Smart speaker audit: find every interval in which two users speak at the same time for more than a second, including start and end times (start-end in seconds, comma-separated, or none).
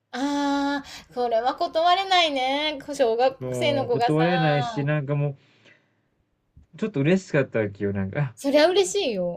3.4-4.9